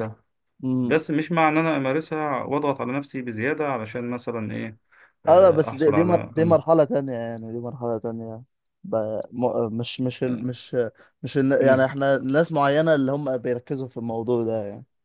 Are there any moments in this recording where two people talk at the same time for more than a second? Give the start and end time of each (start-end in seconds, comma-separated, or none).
5.3-6.6